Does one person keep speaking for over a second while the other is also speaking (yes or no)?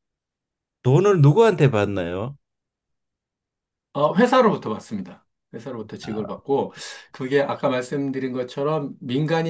no